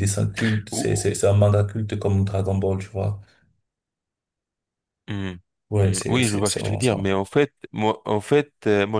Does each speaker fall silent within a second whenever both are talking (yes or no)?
no